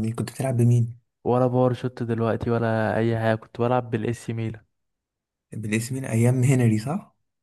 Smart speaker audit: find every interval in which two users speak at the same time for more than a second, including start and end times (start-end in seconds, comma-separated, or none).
none